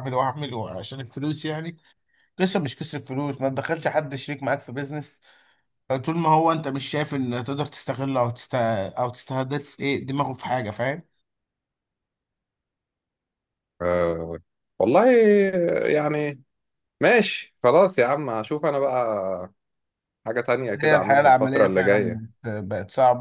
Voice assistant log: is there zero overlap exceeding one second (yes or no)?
no